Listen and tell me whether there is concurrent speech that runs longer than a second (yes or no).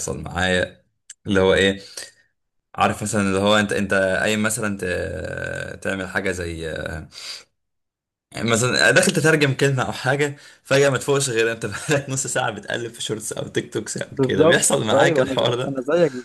yes